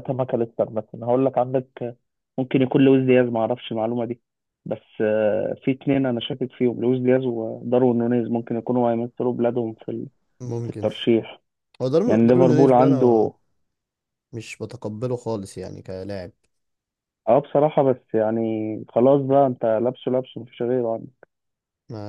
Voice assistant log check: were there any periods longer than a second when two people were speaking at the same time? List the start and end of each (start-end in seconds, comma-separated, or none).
12.1-13.3